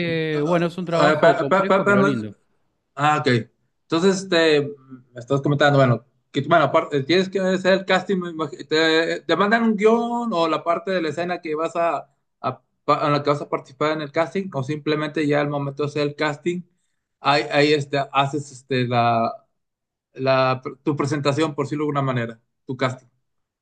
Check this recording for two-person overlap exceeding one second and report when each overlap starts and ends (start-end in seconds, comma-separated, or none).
0.9-2.3